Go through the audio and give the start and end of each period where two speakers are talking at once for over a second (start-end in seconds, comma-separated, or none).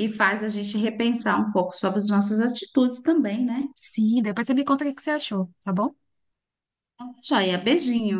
none